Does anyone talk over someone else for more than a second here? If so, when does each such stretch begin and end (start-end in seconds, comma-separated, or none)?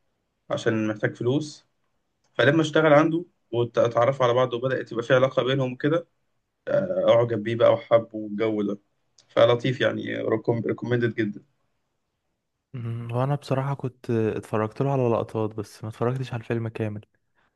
none